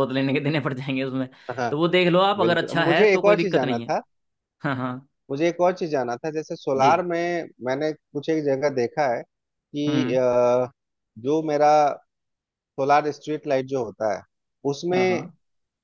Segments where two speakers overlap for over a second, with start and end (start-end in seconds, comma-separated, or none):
2.5-3.9